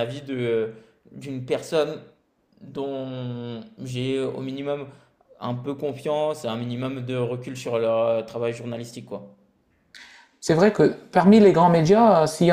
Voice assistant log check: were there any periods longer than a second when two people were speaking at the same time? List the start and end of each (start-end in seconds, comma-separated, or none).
none